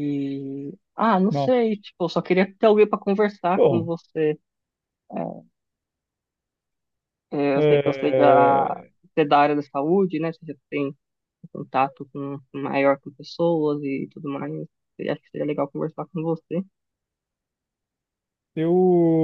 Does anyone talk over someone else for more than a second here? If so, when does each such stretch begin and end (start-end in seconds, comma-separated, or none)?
7.5-8.9